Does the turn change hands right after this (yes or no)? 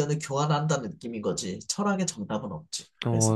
yes